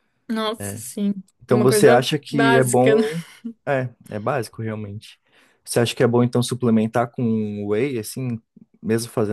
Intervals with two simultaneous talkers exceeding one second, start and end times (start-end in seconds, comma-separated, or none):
1.5-3.0